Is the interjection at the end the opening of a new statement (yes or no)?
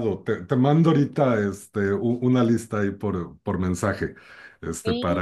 no